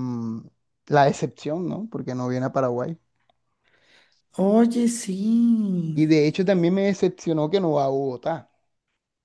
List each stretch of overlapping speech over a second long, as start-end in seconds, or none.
none